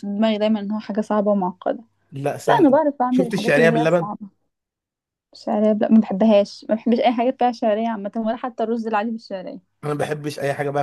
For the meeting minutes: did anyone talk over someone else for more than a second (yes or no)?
yes